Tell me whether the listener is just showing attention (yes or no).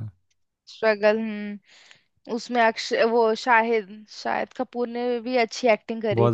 no